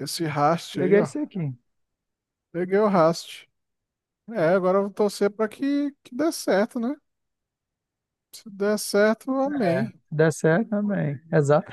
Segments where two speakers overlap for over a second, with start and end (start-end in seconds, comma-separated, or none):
none